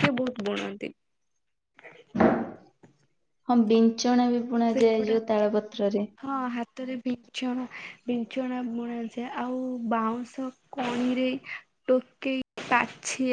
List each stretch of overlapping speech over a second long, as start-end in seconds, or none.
none